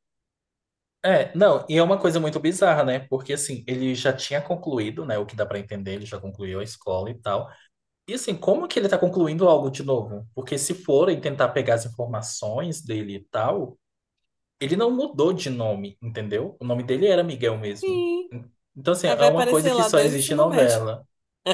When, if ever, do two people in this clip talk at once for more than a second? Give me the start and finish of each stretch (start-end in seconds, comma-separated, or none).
19.0-20.8